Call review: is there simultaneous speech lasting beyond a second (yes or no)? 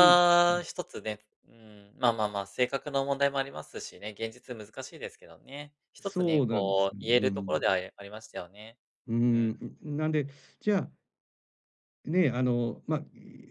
yes